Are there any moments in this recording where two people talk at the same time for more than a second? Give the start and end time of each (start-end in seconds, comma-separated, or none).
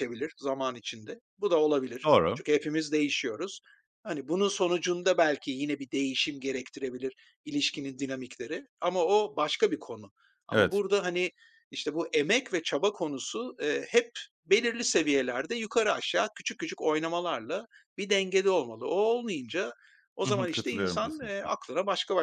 20.2-21.5